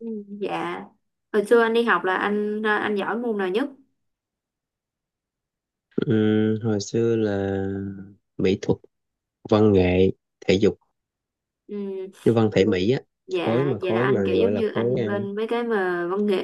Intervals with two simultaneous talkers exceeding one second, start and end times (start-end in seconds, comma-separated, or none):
13.4-15.1